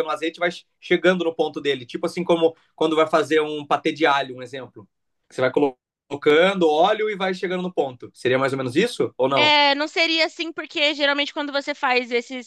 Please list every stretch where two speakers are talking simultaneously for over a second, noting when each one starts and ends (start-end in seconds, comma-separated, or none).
none